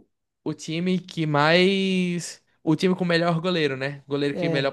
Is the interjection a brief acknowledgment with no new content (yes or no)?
yes